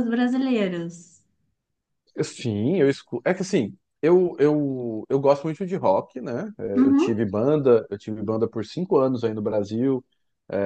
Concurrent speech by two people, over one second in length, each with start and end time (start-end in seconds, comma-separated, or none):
none